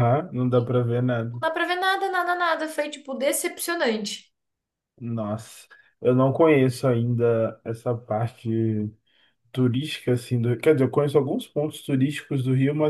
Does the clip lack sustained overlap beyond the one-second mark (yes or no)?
yes